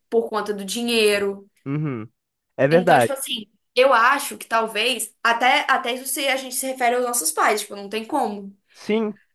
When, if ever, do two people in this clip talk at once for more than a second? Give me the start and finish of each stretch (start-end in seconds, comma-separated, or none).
none